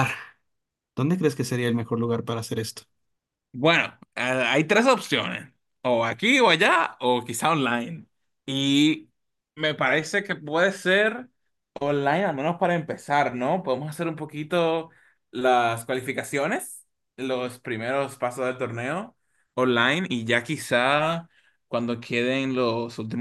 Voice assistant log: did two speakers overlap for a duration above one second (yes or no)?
no